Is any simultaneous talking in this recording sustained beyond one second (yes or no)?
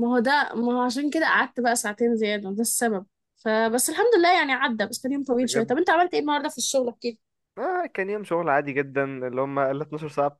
no